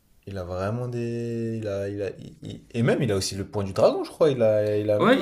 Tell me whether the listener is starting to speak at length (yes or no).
yes